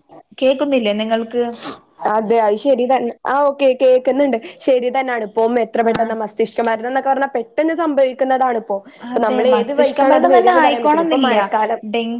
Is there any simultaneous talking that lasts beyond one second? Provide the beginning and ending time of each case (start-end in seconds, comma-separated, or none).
9.3-11.4